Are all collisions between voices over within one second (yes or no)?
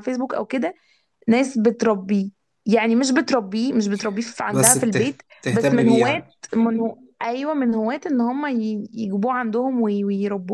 no